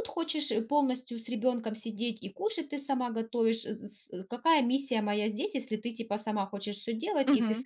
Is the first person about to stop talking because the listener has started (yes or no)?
yes